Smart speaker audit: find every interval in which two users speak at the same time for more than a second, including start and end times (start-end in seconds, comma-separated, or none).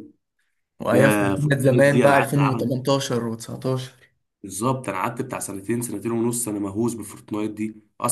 0.9-2.7